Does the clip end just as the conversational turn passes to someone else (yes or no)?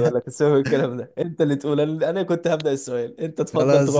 yes